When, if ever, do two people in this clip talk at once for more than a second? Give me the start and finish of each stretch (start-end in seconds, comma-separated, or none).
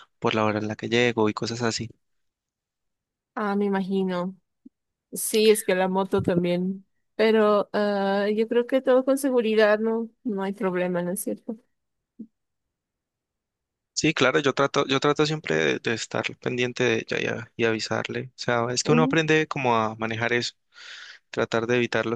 none